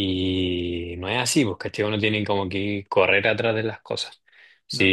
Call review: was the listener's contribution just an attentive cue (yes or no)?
yes